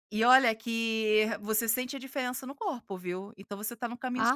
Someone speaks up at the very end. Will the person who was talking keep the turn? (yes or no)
no